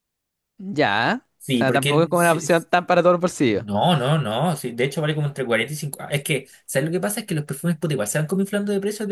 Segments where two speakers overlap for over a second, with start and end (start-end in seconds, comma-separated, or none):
1.4-2.7